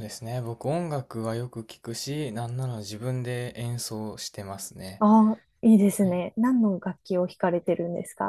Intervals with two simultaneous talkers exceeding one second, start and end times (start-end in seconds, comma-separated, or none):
none